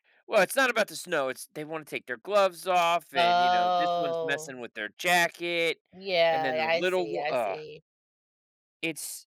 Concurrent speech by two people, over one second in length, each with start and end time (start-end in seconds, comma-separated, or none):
3.1-4.6, 6.3-7.6